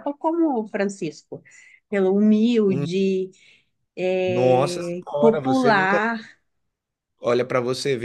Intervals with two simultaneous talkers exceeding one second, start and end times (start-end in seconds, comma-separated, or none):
4.3-6.0